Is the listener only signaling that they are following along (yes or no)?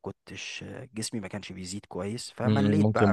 no